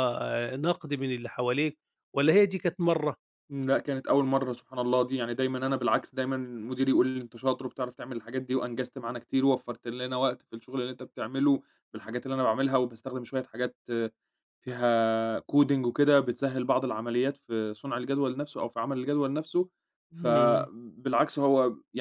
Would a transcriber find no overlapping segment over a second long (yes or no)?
yes